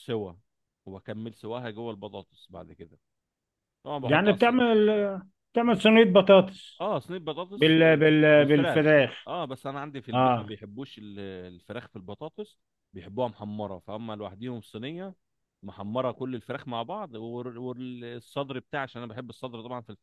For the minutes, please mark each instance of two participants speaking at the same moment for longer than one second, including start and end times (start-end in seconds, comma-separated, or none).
7.5-9.3